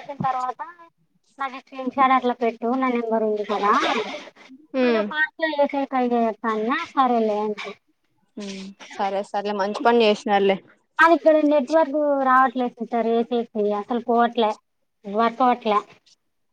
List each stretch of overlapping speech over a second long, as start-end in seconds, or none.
none